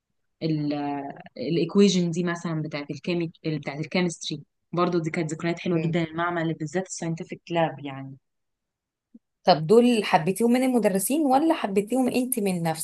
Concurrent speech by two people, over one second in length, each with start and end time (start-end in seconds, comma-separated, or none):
none